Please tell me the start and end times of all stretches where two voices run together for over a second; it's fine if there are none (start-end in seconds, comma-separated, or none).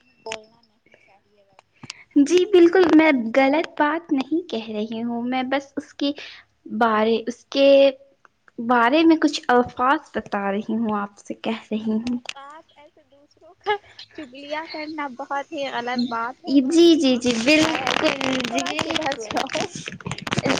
16.7-18.6